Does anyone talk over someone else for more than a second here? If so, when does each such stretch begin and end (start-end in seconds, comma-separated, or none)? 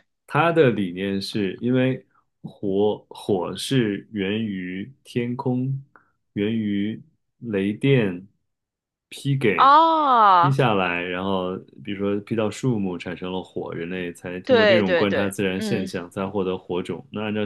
14.4-15.9